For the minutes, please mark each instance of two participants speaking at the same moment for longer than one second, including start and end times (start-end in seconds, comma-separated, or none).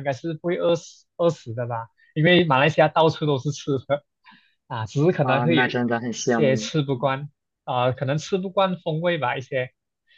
5.2-6.7